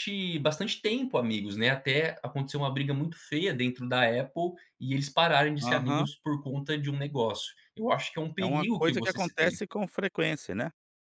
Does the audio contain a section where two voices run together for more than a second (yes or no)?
yes